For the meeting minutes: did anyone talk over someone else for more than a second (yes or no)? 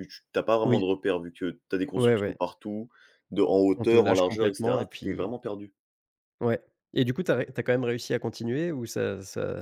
yes